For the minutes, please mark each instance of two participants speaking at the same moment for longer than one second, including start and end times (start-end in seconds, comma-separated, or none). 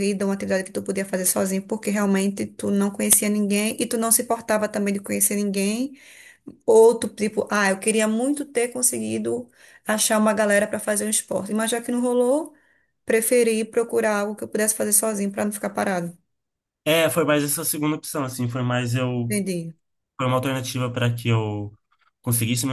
none